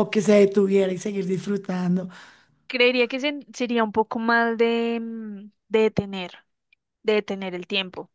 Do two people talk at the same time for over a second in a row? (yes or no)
no